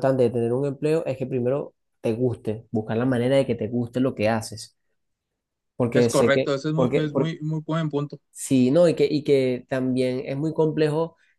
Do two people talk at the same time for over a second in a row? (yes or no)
yes